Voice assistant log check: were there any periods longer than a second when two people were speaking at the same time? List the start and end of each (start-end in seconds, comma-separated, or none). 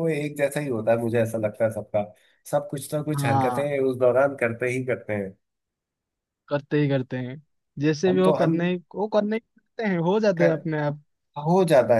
none